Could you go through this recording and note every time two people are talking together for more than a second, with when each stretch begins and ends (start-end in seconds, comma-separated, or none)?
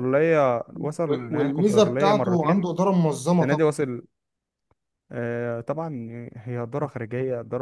1.1-2.7